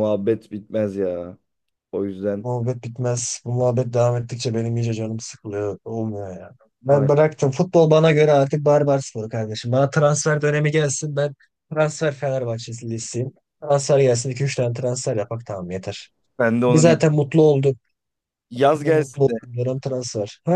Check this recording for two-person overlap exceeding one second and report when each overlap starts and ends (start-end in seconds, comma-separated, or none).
none